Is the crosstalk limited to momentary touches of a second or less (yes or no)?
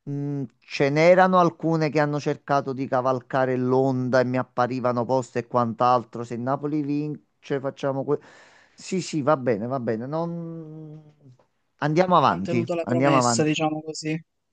no